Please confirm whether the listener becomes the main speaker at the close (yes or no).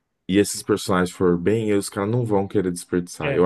no